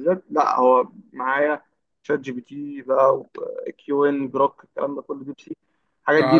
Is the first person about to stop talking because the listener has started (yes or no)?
yes